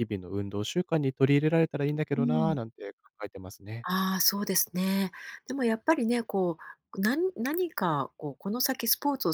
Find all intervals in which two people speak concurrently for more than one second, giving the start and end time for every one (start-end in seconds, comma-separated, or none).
none